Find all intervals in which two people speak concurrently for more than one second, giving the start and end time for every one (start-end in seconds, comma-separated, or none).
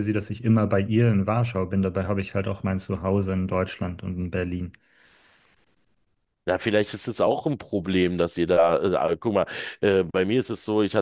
none